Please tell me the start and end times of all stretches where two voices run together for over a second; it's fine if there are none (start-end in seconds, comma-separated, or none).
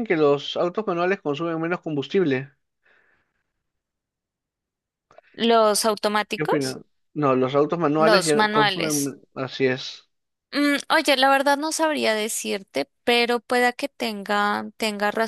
8.0-9.2